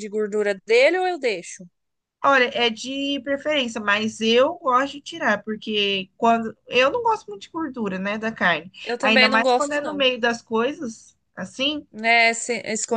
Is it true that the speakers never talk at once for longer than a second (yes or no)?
no